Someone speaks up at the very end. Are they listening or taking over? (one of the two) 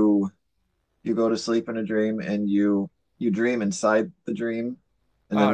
taking over